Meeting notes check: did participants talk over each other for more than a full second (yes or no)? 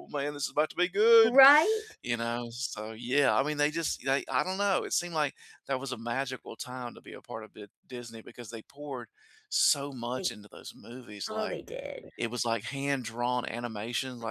no